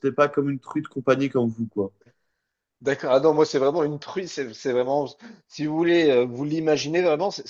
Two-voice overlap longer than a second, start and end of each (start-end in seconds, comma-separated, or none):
none